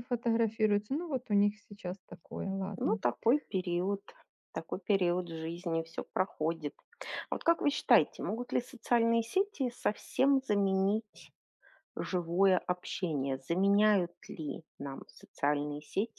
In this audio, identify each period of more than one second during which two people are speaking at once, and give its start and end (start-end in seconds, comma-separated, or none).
none